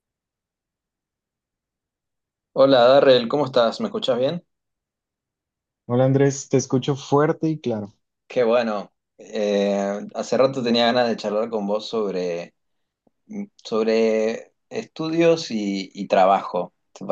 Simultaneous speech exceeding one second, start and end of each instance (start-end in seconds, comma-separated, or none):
none